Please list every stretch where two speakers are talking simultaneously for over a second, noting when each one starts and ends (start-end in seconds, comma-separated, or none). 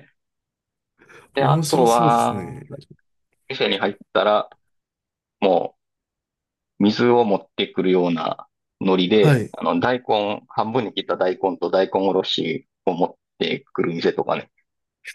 1.4-2.6